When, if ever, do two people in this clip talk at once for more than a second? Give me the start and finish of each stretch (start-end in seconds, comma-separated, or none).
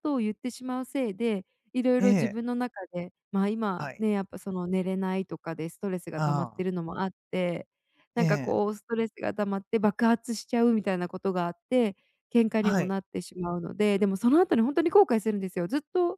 none